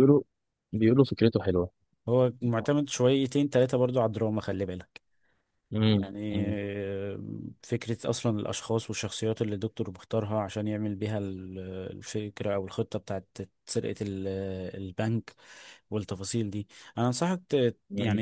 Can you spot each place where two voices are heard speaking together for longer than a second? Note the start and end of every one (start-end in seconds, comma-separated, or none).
none